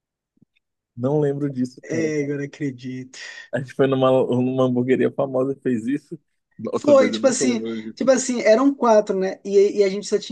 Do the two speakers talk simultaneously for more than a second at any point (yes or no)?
yes